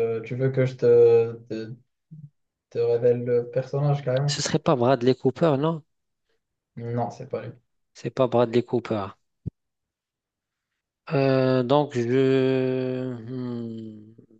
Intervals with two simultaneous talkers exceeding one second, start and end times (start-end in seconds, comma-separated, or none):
none